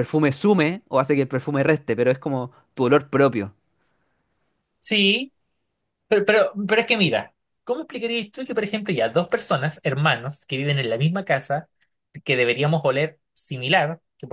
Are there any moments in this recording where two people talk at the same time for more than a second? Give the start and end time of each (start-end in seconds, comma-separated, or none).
none